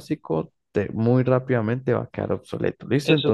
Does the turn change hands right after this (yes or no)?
yes